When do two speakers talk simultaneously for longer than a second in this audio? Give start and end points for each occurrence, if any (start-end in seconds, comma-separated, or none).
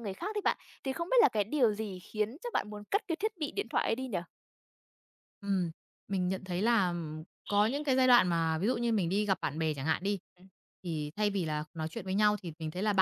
none